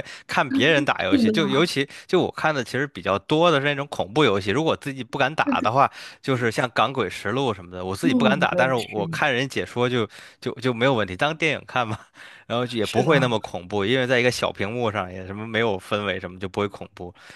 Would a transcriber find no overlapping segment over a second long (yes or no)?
no